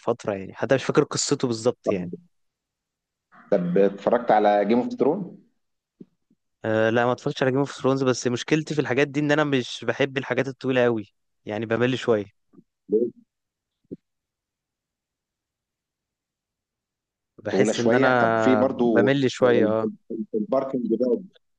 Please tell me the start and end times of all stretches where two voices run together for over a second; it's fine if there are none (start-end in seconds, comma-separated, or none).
17.5-19.7